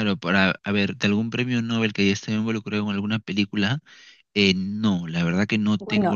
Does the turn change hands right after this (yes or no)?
yes